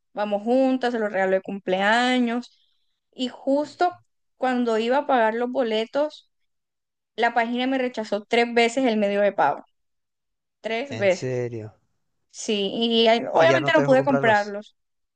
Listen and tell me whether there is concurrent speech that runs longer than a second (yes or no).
yes